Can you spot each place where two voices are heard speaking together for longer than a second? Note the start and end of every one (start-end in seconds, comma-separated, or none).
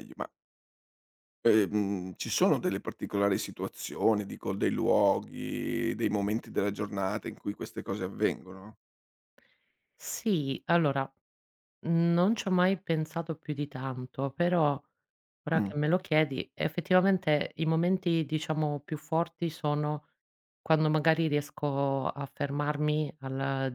none